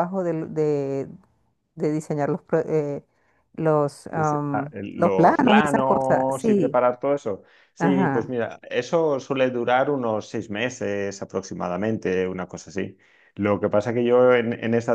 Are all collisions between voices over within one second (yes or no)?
no